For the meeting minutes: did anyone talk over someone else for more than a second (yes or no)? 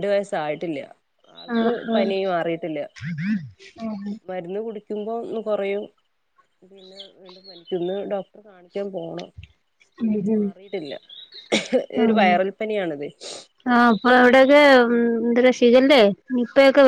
no